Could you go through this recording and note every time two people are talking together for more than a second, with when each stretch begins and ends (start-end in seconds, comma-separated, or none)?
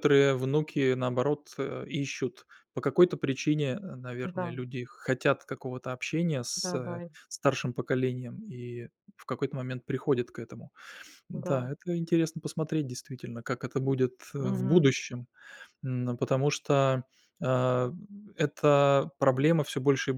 none